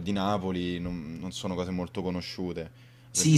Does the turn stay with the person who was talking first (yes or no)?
no